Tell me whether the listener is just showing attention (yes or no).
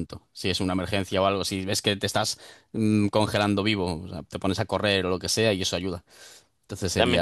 no